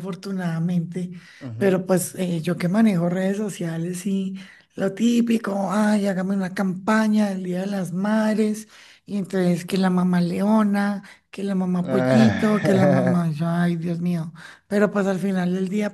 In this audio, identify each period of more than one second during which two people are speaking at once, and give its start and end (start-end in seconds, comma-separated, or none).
11.8-13.2